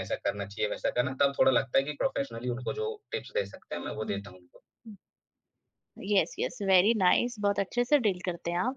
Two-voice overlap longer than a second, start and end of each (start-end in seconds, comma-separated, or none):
none